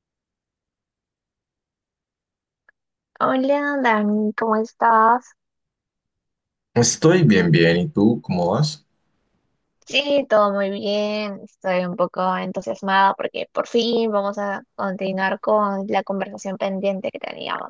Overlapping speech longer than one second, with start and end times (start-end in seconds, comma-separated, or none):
none